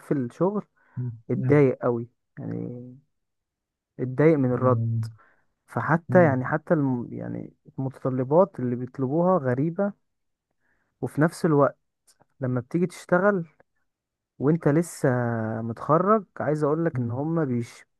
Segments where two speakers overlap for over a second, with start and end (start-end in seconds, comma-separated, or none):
none